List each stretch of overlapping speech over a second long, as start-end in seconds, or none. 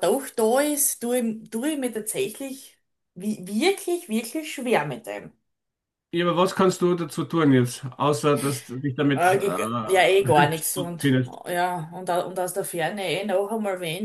9.1-11.4